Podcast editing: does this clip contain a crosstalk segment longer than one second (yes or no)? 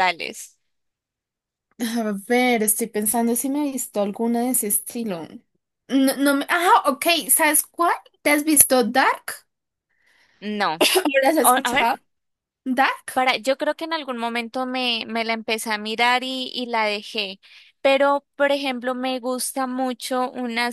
no